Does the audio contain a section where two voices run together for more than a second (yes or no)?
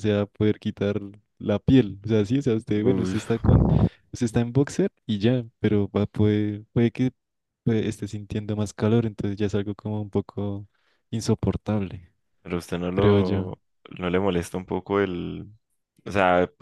no